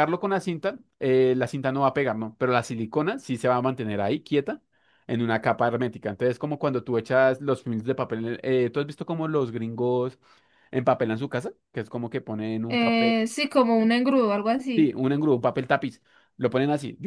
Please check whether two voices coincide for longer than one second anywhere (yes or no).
no